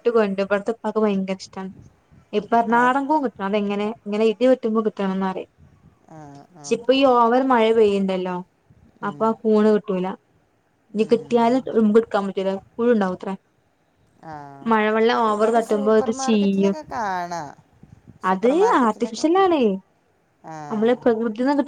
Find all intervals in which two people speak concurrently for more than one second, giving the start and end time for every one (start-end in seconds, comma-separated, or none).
none